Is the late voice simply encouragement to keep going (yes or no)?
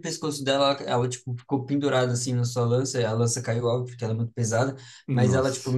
yes